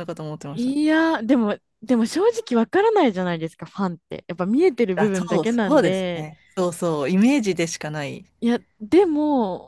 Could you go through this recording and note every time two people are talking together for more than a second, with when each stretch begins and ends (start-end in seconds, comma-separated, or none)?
5.0-6.3